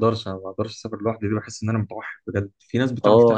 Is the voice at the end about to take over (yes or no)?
yes